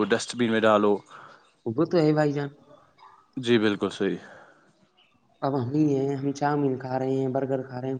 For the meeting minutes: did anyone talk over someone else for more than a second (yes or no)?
no